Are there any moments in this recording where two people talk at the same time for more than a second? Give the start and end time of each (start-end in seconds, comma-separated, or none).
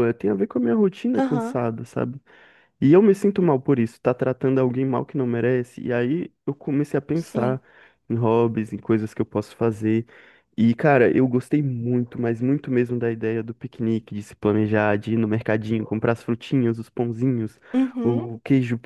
none